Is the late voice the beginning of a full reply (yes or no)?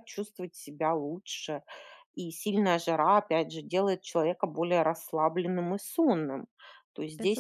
no